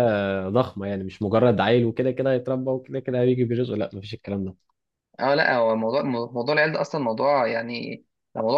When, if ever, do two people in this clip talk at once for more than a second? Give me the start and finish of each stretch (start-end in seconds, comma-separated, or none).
none